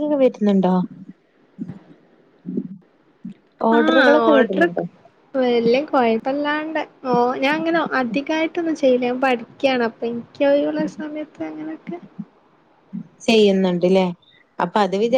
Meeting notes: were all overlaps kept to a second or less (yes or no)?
yes